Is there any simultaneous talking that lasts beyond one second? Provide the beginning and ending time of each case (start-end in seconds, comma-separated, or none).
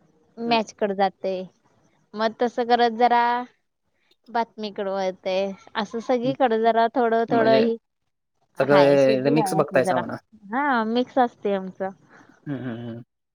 8.7-10.0